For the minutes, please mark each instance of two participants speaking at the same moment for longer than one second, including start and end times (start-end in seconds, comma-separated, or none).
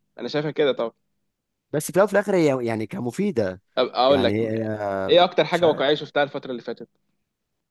4.1-5.8